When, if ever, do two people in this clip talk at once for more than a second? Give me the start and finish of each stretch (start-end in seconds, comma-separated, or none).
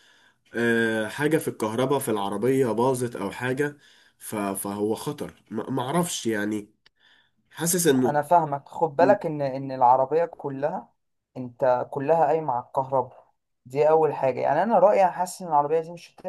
none